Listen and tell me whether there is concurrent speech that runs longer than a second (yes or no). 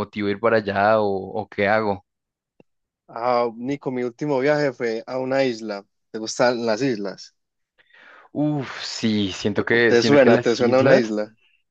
yes